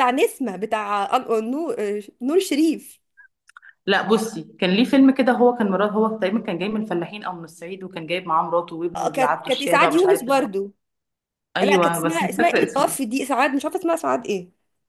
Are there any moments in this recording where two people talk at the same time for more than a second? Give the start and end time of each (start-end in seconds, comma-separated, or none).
8.9-10.5, 11.6-13.0